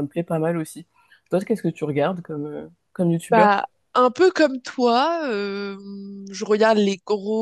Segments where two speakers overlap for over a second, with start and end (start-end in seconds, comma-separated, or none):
none